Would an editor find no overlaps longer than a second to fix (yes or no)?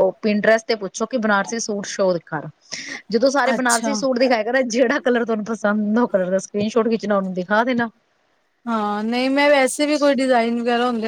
yes